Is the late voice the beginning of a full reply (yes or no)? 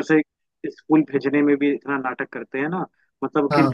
no